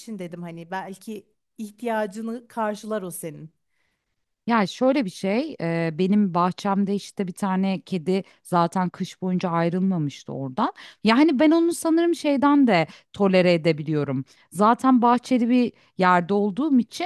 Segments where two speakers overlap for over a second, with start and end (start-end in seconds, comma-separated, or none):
none